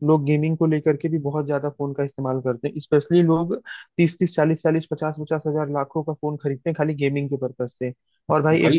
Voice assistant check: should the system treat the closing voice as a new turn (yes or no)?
no